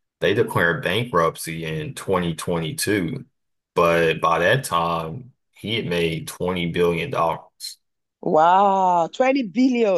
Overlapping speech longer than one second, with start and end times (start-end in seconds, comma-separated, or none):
none